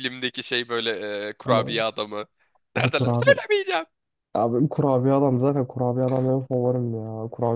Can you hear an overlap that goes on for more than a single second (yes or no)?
no